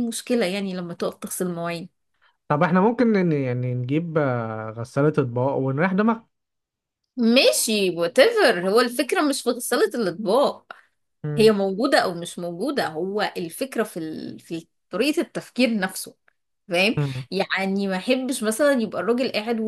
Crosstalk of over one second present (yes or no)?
no